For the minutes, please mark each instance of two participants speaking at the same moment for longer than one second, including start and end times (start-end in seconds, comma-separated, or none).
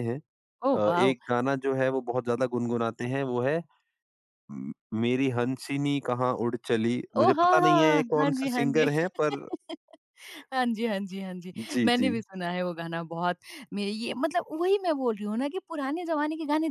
7.2-8.9